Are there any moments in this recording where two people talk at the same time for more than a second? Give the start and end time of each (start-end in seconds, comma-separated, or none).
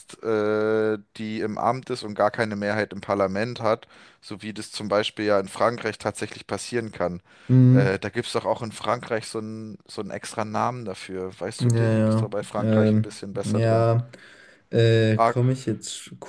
11.6-13.9